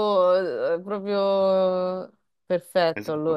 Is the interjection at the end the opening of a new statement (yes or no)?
yes